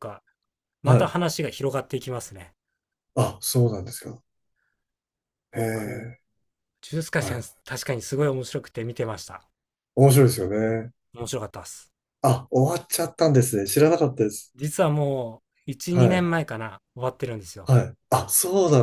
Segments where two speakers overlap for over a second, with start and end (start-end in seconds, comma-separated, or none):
none